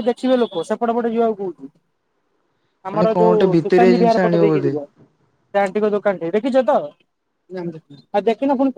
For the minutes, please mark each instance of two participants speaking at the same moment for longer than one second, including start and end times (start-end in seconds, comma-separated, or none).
3.0-4.7